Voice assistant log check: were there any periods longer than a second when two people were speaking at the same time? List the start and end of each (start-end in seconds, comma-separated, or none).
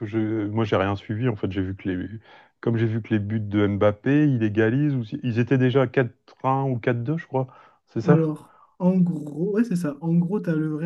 none